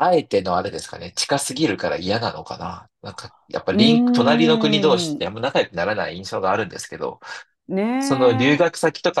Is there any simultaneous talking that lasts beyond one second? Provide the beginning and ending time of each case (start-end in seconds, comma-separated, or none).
3.7-5.3